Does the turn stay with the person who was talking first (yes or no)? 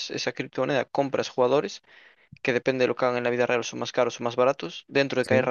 yes